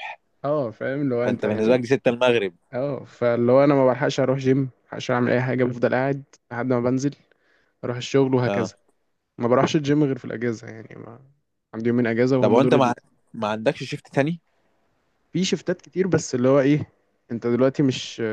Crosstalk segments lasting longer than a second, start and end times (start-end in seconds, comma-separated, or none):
none